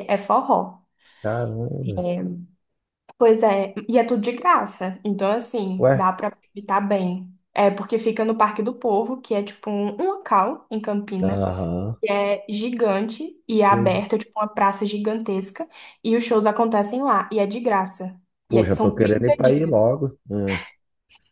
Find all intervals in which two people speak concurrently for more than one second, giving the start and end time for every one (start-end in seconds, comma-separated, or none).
18.5-19.9